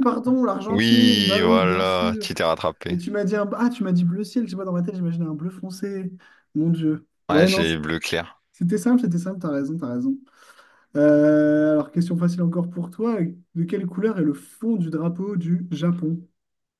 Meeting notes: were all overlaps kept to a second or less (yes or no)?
no